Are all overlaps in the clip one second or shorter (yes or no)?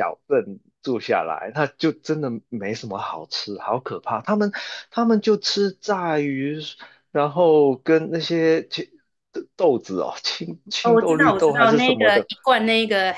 no